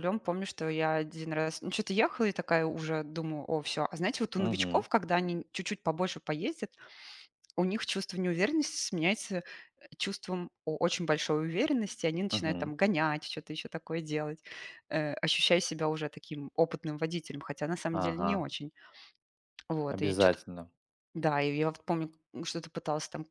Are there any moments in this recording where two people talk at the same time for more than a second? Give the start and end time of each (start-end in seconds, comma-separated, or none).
none